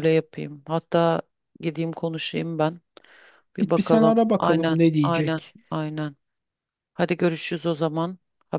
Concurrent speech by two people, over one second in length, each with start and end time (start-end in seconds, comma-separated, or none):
3.6-5.6